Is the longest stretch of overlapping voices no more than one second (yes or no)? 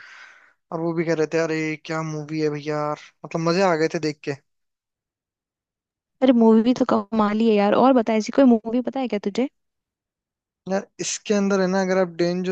yes